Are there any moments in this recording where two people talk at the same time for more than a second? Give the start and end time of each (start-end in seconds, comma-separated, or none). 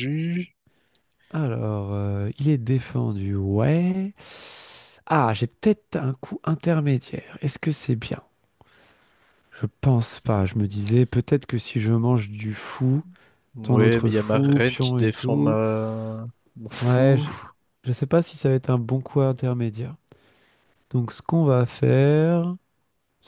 13.6-15.6